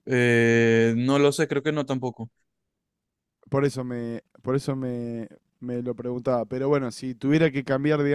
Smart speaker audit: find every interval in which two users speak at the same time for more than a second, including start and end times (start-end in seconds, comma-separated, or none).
none